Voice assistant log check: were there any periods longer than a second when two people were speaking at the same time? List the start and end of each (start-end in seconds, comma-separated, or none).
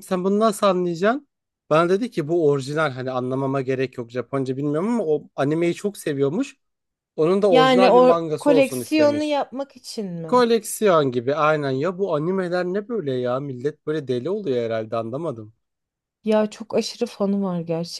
7.5-9.4